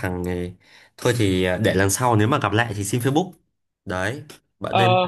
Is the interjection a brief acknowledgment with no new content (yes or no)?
yes